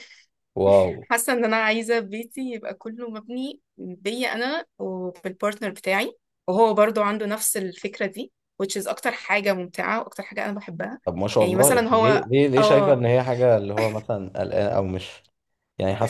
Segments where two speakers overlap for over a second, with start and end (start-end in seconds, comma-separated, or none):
11.4-13.0